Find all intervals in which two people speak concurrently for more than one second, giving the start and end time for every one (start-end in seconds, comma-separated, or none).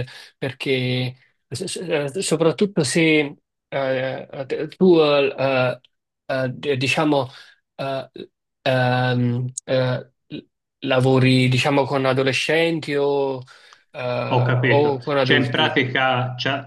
14.3-15.8